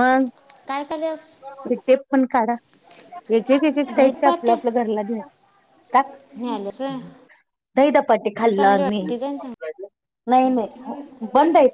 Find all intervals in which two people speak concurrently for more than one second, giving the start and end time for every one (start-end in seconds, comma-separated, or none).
none